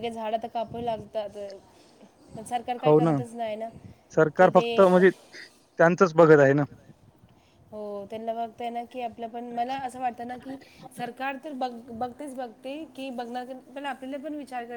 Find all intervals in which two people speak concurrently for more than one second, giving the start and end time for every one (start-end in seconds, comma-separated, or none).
none